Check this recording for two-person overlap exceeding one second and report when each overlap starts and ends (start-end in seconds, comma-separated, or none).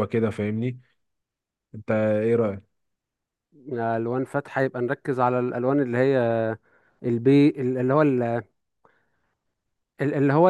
none